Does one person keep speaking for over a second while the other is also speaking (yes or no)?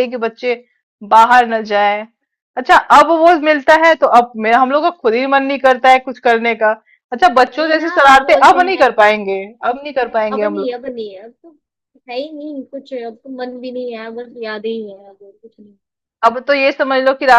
yes